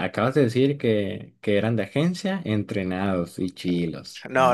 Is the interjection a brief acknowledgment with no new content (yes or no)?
no